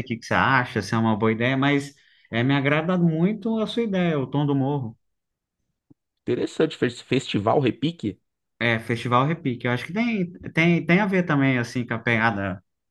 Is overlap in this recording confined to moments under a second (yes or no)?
yes